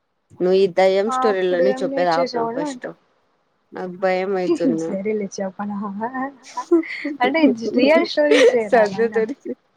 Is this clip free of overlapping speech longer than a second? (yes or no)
no